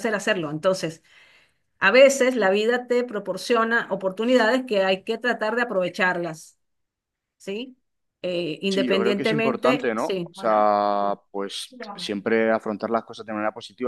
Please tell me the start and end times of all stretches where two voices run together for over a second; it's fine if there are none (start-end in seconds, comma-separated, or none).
8.7-10.7